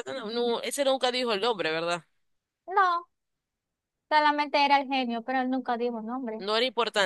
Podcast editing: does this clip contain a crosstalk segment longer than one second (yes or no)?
no